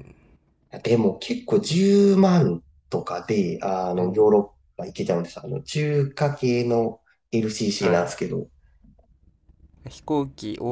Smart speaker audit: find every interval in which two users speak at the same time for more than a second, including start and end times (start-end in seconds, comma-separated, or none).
none